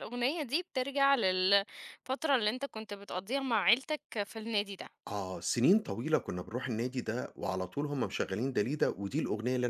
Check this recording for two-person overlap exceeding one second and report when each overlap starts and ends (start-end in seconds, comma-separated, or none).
none